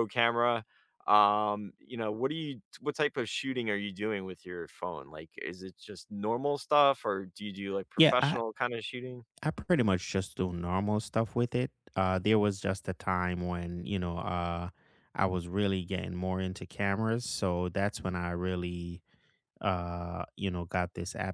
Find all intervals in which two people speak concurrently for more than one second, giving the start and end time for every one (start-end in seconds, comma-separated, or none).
none